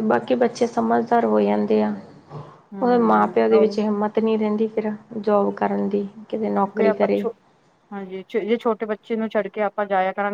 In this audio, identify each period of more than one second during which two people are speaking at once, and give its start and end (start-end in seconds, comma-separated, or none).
none